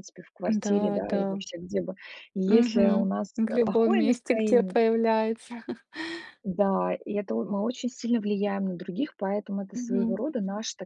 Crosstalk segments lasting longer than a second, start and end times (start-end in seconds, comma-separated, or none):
2.5-4.8